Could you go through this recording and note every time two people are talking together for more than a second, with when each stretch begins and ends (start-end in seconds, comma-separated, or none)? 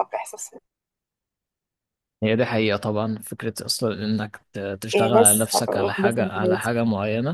4.9-6.7